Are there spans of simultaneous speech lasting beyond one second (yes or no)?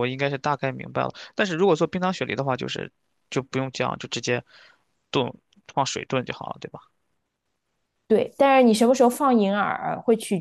no